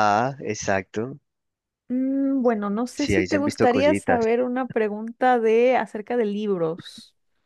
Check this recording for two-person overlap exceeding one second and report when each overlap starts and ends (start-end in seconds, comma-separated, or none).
3.0-4.2